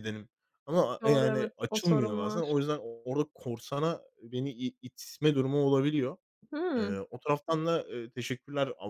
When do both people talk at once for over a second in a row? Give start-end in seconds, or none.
1.0-2.5